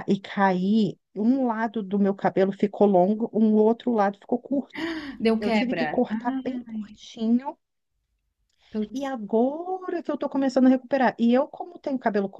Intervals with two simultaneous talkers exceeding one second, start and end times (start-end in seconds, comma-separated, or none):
5.4-7.0